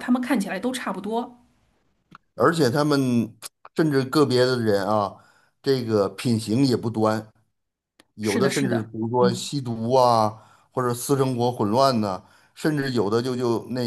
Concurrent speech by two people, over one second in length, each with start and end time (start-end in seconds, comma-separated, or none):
8.2-9.5